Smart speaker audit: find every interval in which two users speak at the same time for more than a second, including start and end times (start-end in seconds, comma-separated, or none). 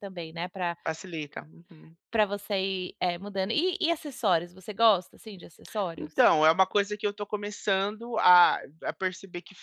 none